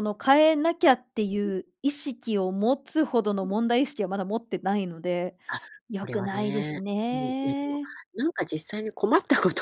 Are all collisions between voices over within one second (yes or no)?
no